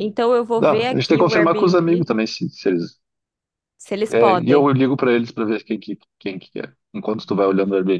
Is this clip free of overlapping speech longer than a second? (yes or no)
no